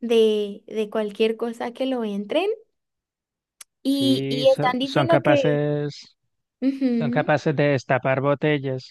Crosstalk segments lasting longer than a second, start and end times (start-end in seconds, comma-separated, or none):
3.9-5.6